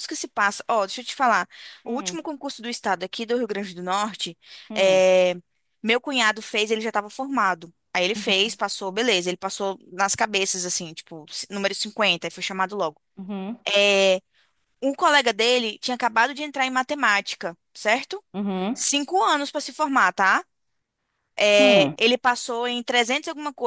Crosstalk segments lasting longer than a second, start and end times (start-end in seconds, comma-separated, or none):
none